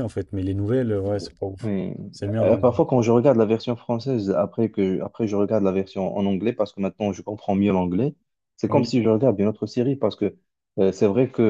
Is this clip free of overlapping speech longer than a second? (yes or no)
yes